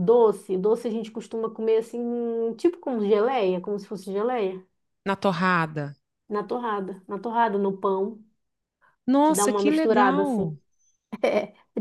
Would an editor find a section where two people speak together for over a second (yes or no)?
yes